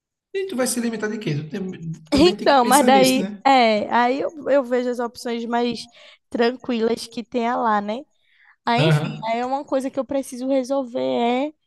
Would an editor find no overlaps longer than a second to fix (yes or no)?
no